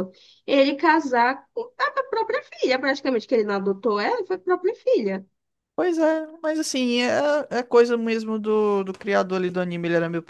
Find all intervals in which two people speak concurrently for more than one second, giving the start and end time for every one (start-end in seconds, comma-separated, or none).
none